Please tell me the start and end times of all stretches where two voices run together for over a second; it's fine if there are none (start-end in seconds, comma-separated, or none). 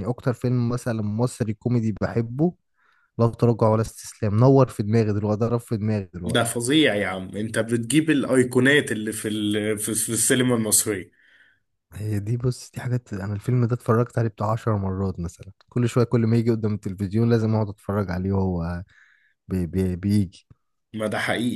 none